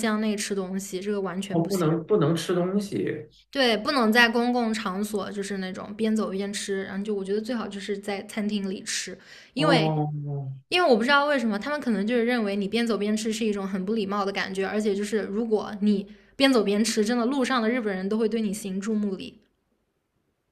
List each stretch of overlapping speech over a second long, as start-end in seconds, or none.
none